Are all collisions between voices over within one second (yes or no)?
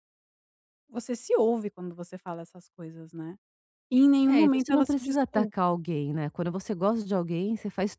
no